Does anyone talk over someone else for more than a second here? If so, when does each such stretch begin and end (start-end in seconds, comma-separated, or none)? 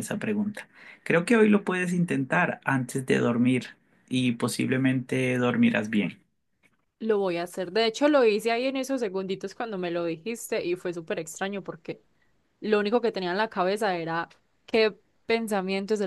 none